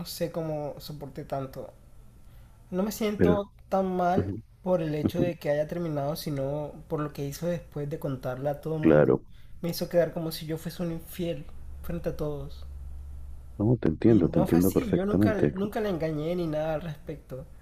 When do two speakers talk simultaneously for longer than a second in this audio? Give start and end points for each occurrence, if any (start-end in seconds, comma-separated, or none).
14.1-15.6